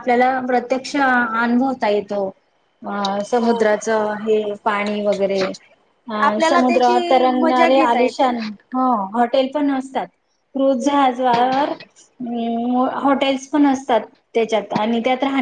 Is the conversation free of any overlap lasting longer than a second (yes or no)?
no